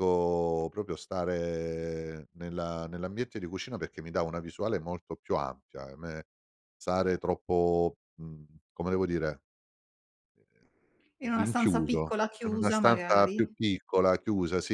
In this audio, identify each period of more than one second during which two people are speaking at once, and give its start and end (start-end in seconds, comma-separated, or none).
11.2-13.5